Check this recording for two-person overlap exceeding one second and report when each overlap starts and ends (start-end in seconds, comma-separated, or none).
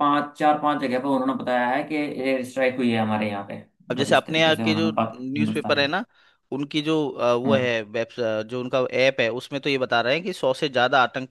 3.9-5.9